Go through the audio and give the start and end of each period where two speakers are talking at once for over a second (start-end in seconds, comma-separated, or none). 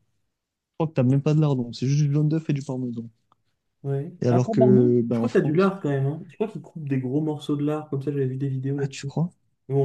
4.2-5.8